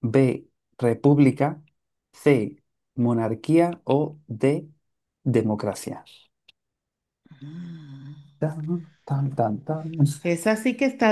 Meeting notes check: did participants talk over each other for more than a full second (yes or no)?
no